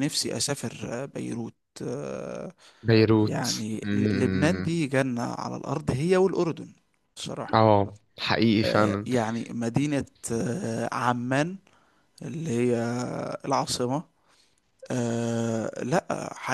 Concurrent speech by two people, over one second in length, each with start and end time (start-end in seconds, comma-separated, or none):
3.2-4.8